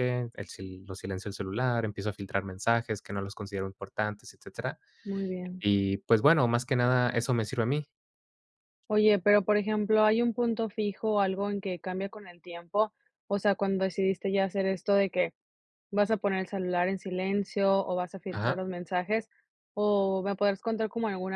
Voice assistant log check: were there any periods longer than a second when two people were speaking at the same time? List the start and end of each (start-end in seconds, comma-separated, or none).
none